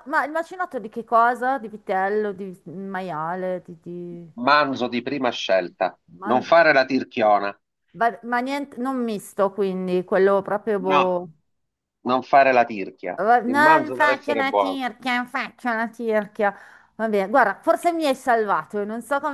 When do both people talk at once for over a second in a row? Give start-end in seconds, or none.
13.2-14.8